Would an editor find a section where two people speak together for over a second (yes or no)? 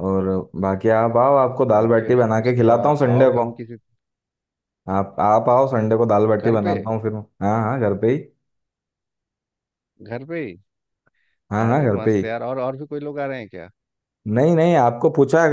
yes